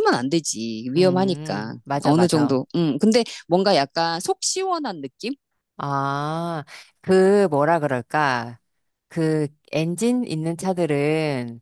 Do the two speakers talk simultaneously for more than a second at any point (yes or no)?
yes